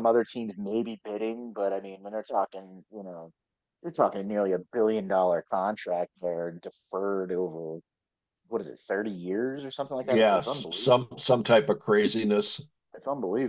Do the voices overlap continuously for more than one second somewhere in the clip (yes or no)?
yes